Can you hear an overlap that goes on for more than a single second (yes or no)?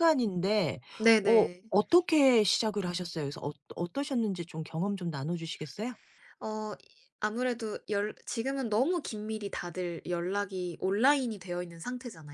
no